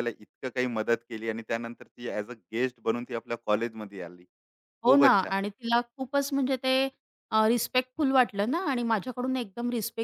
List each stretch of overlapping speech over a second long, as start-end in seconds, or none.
none